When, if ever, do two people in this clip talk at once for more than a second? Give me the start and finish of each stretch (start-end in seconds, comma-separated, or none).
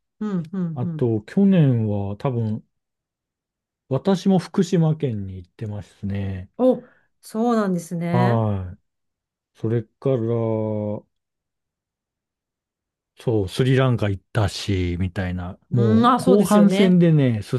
15.7-17.0